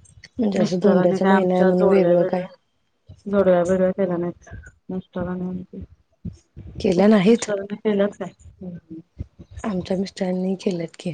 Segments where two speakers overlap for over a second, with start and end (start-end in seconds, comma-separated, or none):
0.6-2.4